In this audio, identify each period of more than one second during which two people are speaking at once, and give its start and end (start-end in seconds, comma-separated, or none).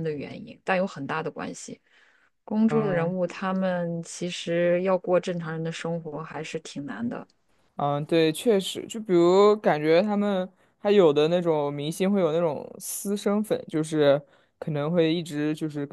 none